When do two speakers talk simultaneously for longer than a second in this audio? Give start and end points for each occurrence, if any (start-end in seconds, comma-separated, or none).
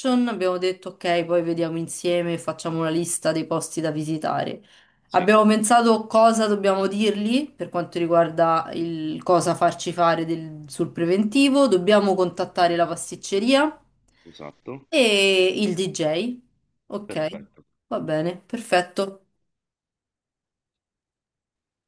none